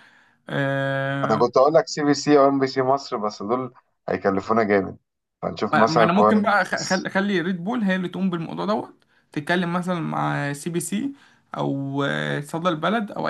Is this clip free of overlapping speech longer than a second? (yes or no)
no